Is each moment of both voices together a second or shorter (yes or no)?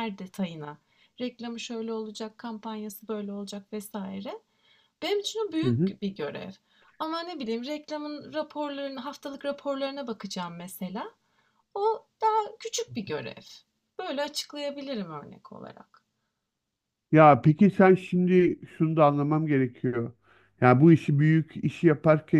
yes